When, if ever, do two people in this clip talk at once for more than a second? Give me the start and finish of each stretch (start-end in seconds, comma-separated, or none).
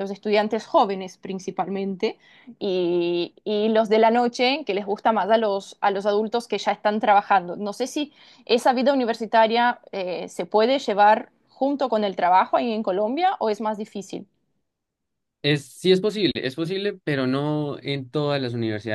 none